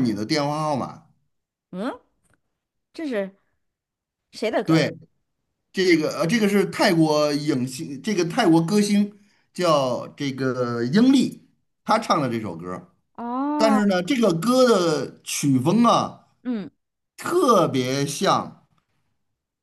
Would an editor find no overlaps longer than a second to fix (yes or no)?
yes